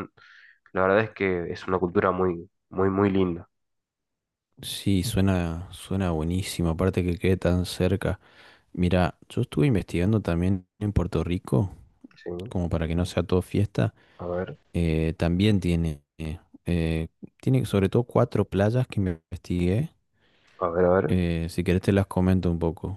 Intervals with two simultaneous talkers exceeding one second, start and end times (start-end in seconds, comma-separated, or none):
none